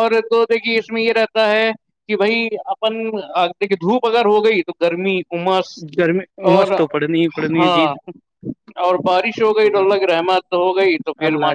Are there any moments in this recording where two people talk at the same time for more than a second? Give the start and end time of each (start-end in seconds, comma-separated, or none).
none